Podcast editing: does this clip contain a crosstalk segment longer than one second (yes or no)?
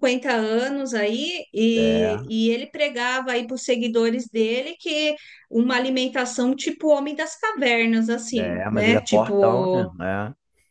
yes